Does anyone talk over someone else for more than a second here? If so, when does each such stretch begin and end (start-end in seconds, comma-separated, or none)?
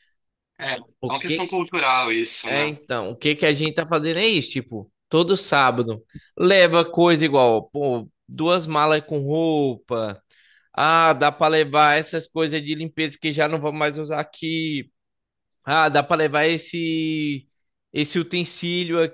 none